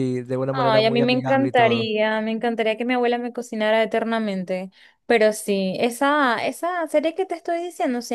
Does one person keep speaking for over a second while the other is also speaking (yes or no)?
yes